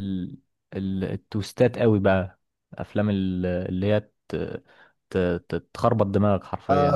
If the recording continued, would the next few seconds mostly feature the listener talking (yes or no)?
yes